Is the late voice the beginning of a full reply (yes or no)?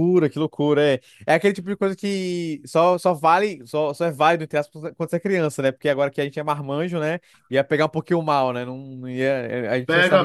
yes